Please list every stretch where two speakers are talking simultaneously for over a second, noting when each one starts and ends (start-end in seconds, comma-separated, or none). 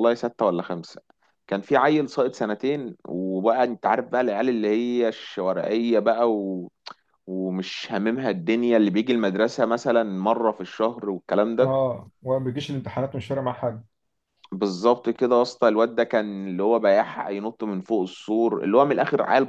none